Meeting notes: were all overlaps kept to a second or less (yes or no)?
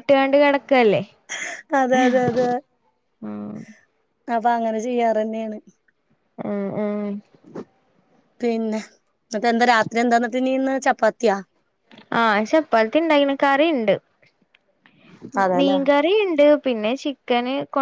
yes